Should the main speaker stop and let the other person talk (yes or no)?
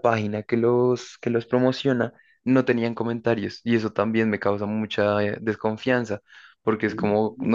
no